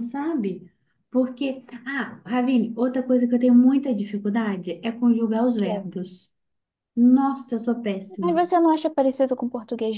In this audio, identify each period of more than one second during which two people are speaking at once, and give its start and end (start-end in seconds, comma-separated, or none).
none